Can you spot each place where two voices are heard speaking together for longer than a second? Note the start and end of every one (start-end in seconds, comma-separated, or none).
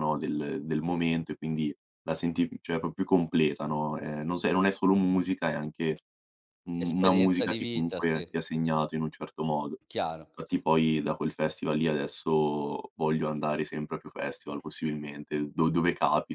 6.8-8.3